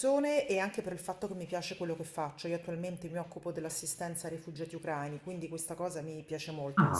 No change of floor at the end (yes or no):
no